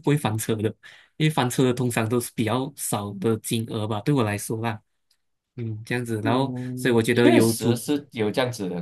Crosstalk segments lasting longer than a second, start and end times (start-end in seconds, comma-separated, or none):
6.2-7.8